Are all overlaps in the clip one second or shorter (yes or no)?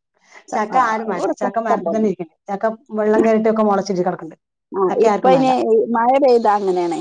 no